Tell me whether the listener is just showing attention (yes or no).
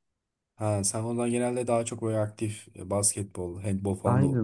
no